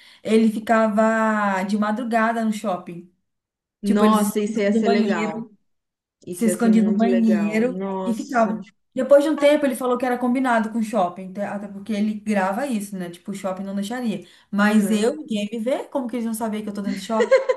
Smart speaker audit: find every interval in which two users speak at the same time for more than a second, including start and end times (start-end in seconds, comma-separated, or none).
3.8-5.4, 6.3-8.6